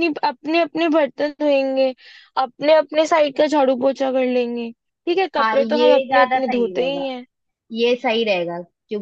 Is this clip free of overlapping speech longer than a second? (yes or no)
no